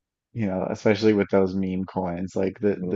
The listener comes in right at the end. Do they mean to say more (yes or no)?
no